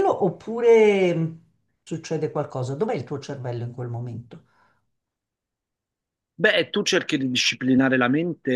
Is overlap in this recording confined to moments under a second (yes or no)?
yes